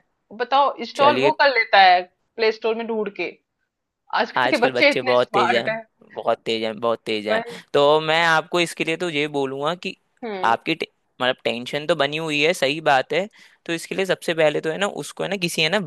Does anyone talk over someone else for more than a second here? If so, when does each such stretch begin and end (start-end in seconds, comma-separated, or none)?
4.4-5.7